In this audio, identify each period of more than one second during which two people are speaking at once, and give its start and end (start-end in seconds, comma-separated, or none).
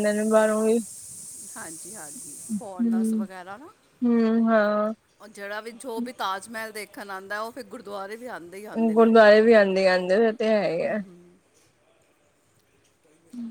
none